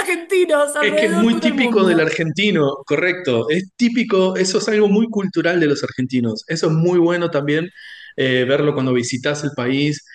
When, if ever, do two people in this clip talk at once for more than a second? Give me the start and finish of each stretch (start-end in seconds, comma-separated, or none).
0.8-2.2